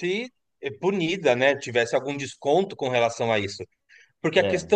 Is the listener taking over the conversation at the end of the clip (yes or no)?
no